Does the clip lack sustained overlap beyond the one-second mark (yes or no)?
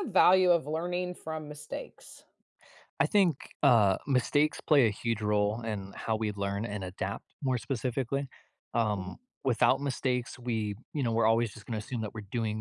yes